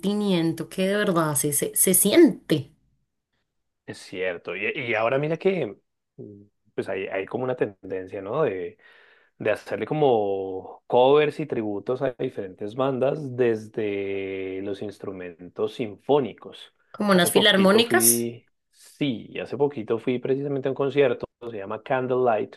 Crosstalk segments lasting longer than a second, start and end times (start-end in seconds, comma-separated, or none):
17.1-18.3